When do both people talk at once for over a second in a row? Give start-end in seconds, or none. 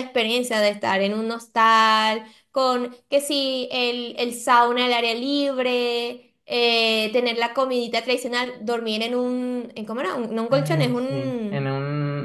10.5-11.7